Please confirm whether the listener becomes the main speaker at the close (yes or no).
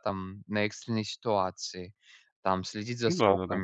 no